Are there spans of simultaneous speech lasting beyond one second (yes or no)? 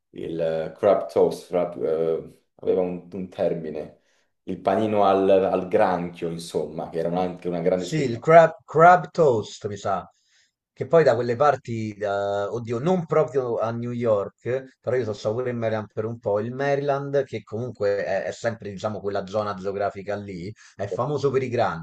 no